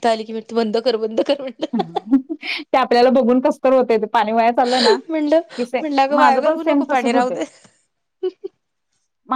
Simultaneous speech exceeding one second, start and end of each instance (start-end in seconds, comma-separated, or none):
5.8-7.3